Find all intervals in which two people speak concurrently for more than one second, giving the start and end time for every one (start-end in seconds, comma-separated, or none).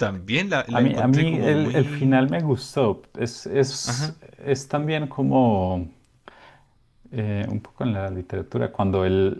0.7-2.2